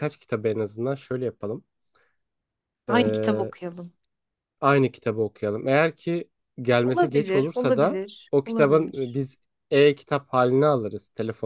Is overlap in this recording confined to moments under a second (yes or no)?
no